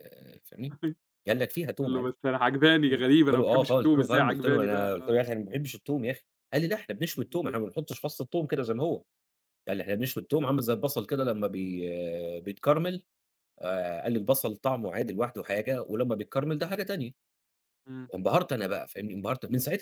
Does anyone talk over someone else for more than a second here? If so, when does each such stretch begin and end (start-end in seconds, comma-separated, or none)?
2.9-5.2